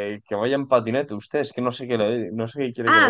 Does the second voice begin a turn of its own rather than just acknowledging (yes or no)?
yes